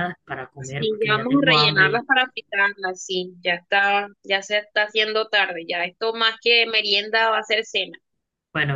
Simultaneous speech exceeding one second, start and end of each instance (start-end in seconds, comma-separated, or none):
0.6-2.0